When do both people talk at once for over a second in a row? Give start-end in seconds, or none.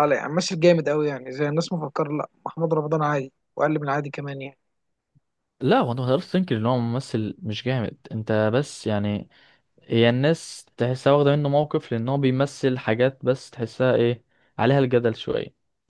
none